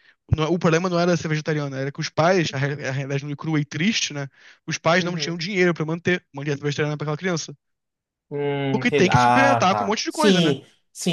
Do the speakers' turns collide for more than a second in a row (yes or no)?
yes